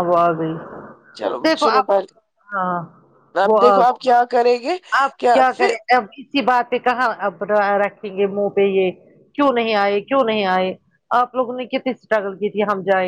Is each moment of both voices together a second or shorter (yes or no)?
yes